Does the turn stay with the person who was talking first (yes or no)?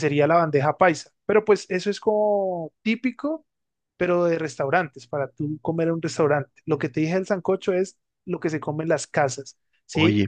yes